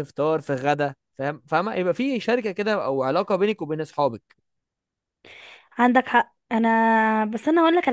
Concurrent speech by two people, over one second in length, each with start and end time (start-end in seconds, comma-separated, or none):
none